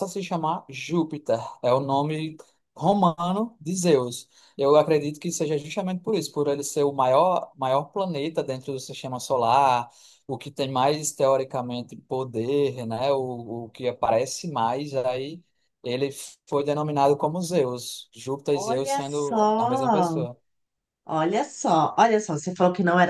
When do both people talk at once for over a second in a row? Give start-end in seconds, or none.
18.5-20.2